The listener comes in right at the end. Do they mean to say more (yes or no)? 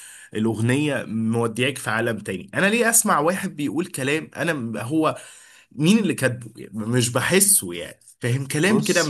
no